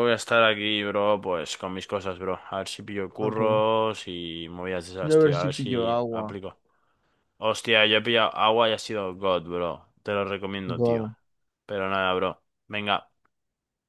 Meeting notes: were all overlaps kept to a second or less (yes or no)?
no